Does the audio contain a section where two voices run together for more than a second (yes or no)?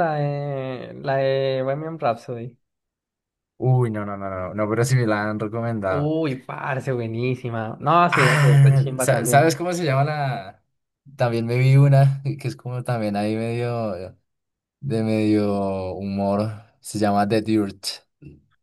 yes